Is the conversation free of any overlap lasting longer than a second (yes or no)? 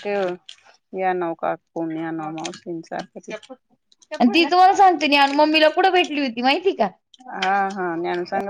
yes